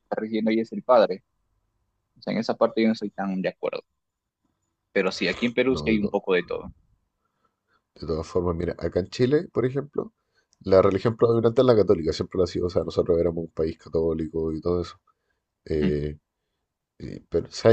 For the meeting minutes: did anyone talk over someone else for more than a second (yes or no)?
no